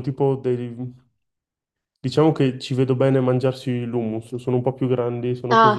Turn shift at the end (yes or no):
yes